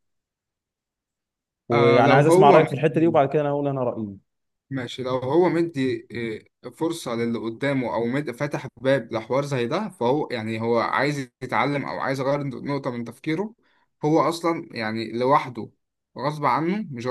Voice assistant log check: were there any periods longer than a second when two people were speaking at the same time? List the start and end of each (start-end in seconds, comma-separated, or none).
1.7-3.2